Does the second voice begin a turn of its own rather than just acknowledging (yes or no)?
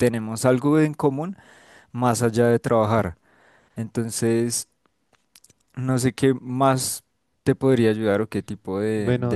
no